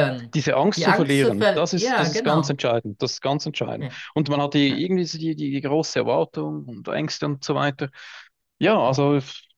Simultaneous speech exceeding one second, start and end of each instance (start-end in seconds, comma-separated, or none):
0.8-2.6